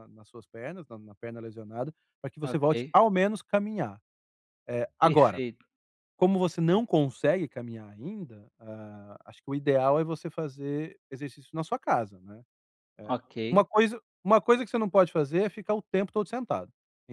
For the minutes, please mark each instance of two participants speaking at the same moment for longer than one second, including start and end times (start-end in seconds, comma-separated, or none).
none